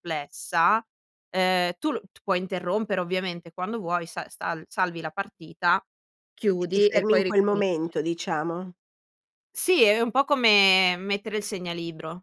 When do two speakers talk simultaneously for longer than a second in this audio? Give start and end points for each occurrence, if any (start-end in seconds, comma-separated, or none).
6.6-8.0